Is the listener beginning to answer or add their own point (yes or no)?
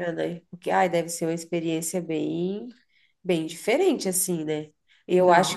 no